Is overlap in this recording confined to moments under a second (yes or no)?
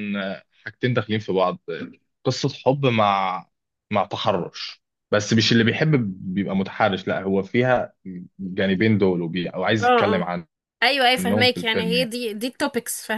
no